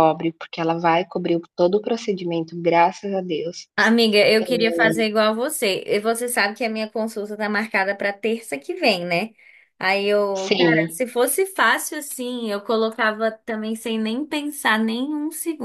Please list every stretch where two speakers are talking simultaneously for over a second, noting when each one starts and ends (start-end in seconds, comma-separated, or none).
none